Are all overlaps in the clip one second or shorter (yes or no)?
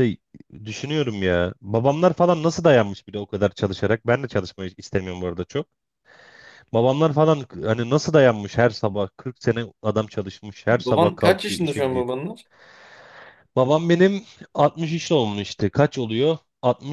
no